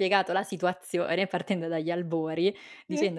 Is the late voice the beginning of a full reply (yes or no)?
no